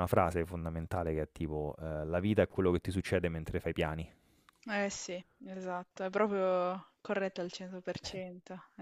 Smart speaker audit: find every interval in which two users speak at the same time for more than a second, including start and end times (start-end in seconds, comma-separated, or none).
none